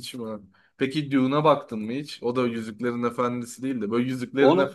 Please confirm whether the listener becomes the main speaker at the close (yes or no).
no